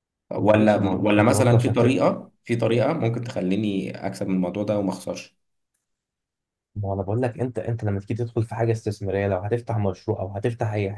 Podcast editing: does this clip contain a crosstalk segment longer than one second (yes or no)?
yes